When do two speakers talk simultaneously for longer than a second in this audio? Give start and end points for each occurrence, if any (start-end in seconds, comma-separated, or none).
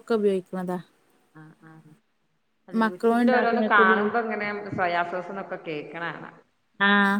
2.8-4.1